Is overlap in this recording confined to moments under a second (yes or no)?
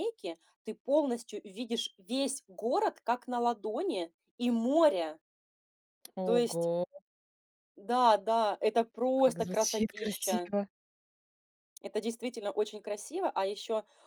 no